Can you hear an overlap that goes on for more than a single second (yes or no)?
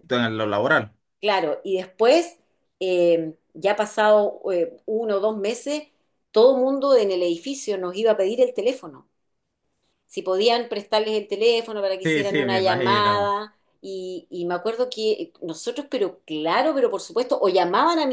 yes